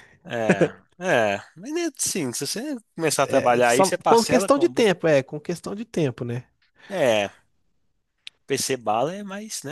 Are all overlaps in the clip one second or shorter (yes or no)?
no